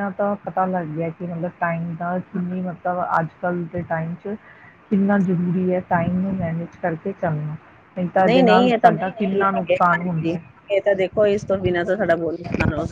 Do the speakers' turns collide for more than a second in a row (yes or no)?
yes